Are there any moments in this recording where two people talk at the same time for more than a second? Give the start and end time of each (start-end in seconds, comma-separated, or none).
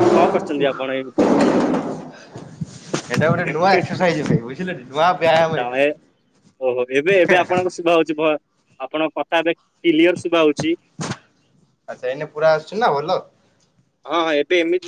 none